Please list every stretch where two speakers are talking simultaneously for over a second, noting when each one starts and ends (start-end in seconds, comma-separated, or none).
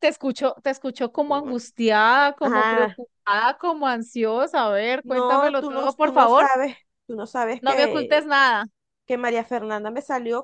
5.0-6.5